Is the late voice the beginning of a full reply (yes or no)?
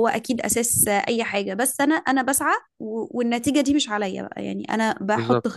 no